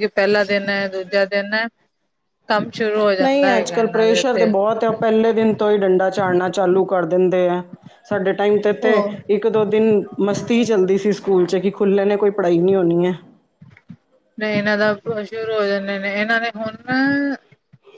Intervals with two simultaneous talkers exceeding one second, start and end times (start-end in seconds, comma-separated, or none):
3.2-4.5